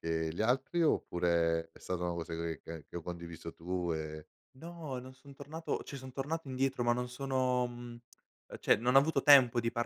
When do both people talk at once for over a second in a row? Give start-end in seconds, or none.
none